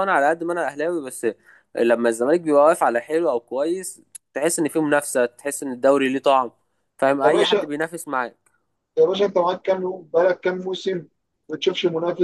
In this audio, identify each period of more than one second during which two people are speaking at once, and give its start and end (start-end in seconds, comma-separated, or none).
none